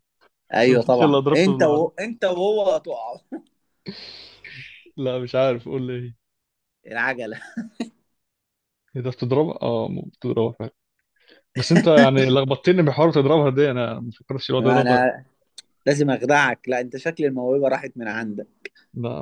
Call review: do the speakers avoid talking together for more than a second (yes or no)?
no